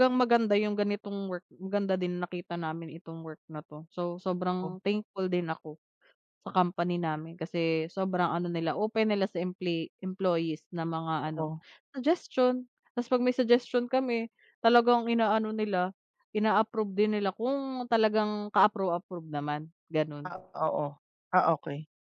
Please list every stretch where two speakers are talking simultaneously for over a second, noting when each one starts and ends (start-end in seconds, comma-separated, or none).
none